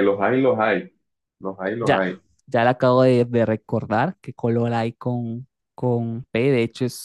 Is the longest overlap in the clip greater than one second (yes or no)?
no